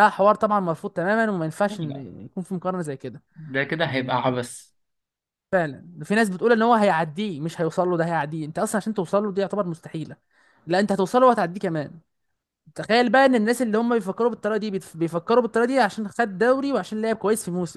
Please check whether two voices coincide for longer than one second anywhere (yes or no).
no